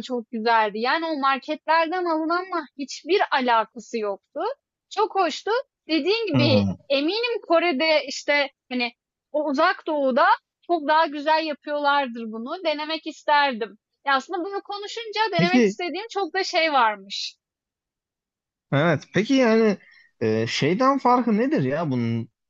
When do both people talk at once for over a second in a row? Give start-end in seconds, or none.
none